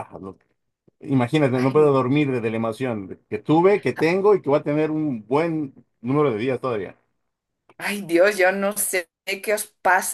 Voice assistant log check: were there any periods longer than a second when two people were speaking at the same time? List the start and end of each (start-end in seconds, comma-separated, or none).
none